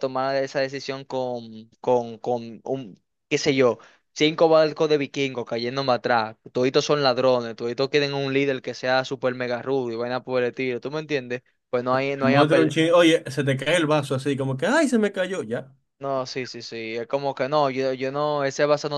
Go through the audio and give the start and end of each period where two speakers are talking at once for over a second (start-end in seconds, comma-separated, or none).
none